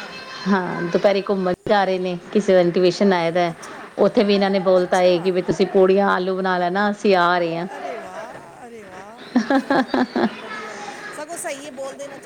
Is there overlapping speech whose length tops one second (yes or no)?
no